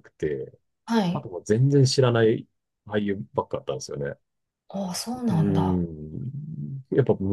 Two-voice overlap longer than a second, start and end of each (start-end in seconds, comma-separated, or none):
none